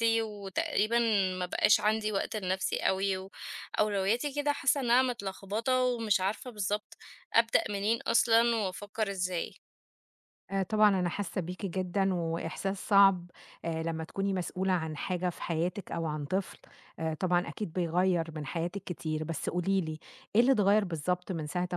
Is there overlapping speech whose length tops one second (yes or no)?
no